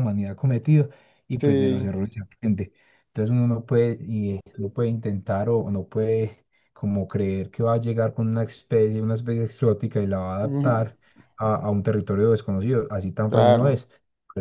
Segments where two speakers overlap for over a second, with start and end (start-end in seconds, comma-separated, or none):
none